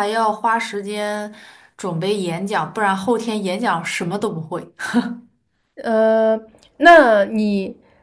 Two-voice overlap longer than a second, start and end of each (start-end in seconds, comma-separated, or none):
none